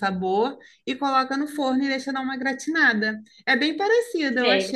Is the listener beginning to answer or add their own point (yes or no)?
no